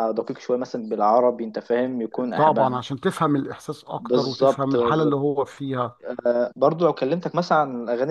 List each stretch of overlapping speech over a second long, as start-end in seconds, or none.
4.0-5.2